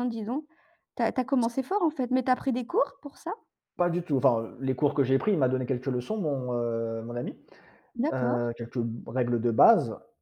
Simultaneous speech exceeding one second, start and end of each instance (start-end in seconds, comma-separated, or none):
none